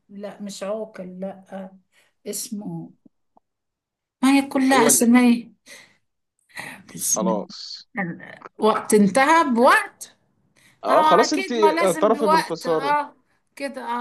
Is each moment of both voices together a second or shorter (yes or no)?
no